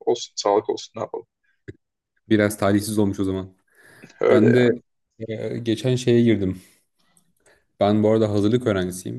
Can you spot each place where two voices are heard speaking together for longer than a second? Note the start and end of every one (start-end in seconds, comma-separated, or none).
none